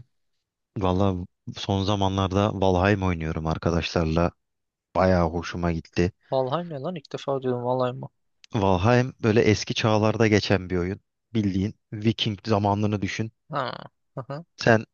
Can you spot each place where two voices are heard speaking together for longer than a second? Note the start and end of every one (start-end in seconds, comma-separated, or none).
none